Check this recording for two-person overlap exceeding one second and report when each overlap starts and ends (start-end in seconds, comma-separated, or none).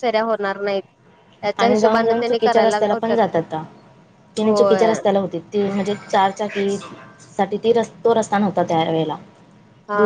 1.6-3.2